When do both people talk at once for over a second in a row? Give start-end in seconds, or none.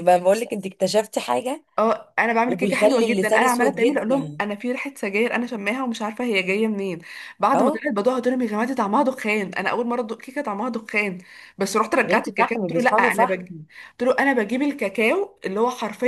2.5-4.4, 12.0-13.5